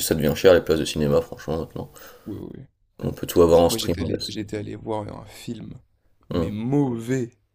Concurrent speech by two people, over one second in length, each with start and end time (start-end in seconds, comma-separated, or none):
none